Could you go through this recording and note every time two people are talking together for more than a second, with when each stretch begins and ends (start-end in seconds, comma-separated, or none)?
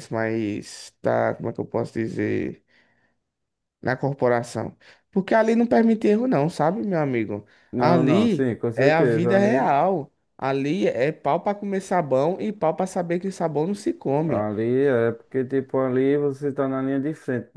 7.7-9.7